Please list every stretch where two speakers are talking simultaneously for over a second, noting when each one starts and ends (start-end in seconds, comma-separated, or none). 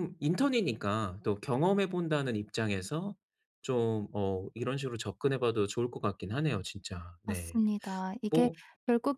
none